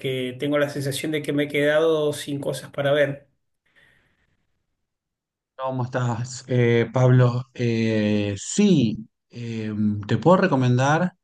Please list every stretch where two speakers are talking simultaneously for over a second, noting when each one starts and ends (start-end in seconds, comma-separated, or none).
none